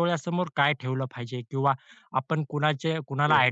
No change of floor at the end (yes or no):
yes